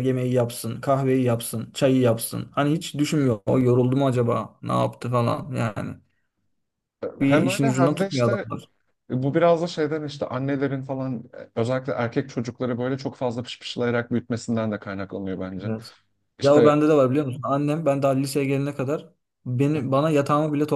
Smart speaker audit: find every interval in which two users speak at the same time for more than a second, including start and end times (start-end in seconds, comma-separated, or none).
7.2-8.4